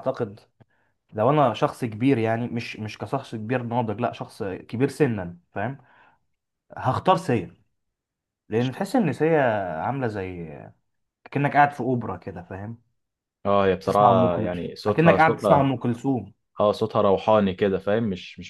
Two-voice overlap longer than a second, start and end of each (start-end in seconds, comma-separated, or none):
13.8-15.7